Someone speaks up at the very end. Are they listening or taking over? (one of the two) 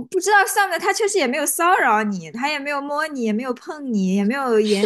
taking over